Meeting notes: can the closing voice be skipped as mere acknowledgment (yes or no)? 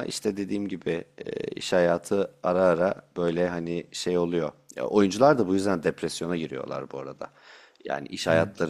yes